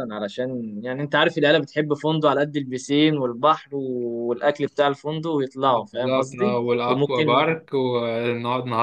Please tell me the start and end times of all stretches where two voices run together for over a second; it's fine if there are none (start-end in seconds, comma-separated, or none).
5.7-7.4